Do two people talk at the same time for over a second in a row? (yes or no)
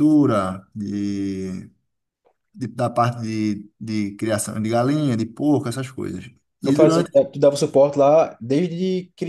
no